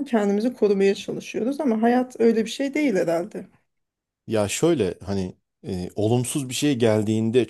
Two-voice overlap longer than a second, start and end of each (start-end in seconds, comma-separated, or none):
none